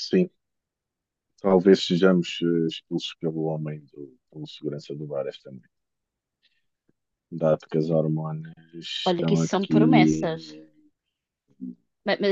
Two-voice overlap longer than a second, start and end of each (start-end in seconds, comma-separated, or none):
9.0-10.6